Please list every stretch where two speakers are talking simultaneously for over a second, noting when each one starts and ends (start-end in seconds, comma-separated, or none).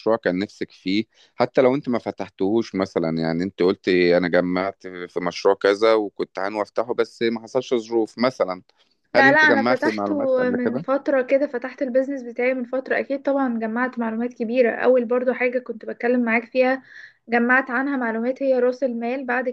9.2-10.9